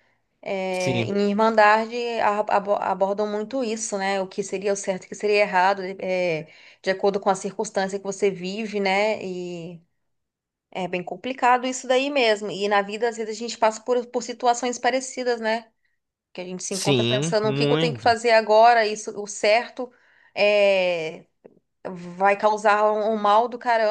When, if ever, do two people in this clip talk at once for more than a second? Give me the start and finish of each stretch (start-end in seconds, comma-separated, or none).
16.7-18.1